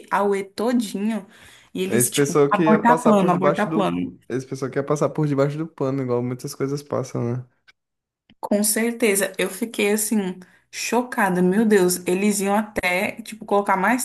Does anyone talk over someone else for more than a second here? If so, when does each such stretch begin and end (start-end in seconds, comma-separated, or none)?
1.9-4.2